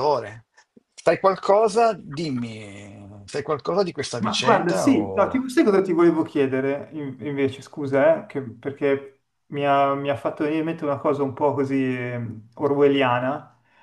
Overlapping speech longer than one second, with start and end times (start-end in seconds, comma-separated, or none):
4.2-5.4